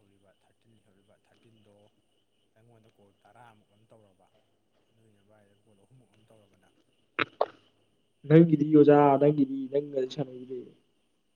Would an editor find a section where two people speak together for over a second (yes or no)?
no